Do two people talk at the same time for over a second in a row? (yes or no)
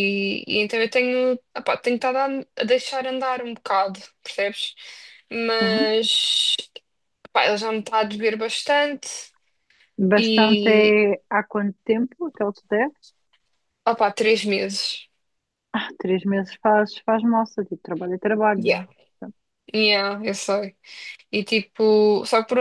no